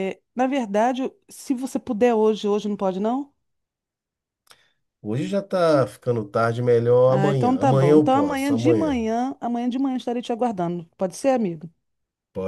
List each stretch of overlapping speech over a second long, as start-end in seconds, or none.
7.1-9.0